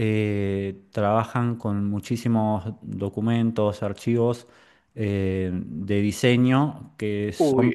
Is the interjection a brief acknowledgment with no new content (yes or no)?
no